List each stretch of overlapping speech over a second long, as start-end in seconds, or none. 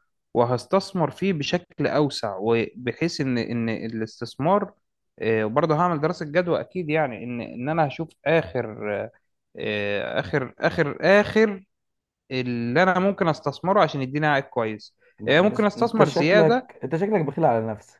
15.2-16.7